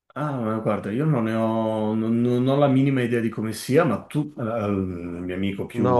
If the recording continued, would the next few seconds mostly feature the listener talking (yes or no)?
yes